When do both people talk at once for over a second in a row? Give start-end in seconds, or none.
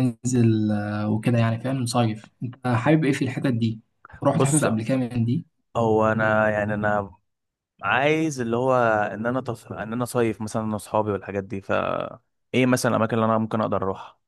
none